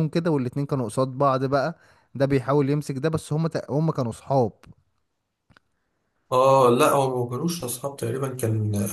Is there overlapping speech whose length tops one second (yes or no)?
no